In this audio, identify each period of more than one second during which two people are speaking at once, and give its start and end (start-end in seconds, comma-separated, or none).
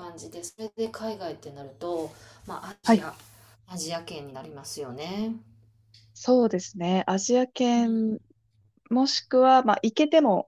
none